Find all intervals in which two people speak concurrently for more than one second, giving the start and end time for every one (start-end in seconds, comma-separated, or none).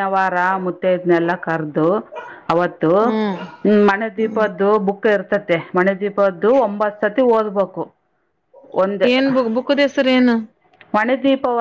none